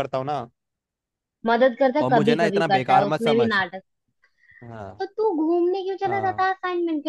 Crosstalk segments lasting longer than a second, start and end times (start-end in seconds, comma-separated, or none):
2.0-3.5